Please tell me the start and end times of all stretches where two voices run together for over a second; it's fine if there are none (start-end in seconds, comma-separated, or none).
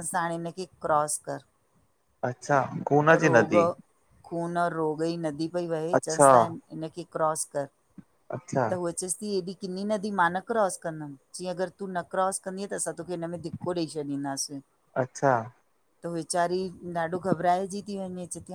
none